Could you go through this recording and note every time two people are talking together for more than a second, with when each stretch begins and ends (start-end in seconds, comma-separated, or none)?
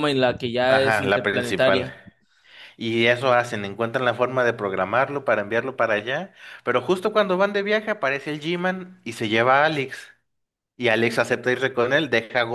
0.7-1.9